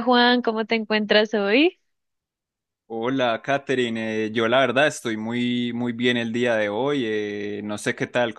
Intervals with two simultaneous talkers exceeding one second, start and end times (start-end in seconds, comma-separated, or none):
none